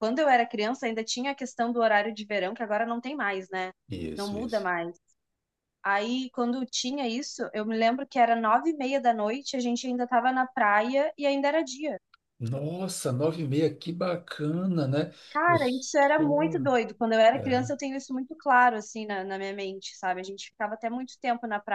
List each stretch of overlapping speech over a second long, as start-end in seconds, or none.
15.3-16.7